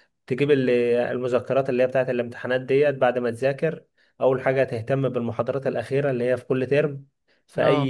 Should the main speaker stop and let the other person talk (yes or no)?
no